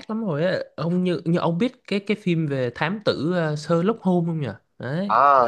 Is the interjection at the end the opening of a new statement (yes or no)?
yes